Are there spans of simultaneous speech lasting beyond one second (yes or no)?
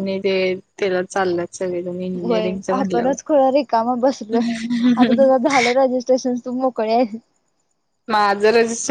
no